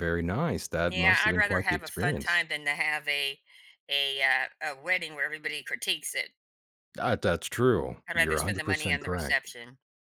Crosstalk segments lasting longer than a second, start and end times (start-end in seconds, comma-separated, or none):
0.9-2.5, 8.1-9.4